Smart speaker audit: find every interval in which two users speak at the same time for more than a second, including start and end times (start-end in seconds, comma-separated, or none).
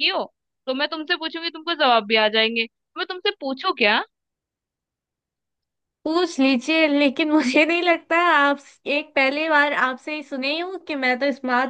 none